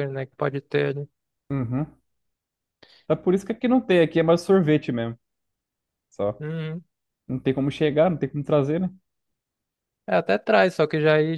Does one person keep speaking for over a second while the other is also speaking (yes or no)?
no